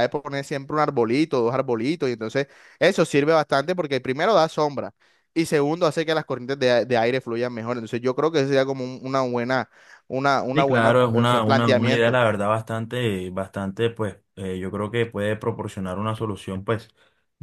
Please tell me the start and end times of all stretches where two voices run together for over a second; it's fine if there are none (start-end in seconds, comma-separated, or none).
10.5-12.2